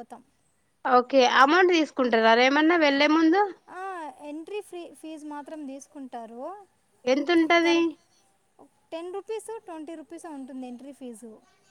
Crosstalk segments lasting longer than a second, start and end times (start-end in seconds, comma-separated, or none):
none